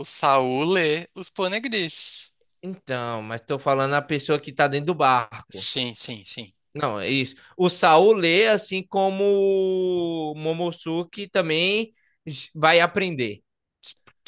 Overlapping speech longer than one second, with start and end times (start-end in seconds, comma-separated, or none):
none